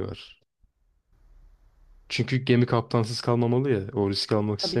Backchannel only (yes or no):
yes